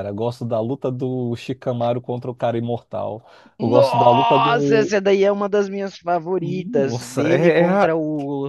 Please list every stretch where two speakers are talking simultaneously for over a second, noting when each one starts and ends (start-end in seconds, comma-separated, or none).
3.6-4.9, 6.4-8.0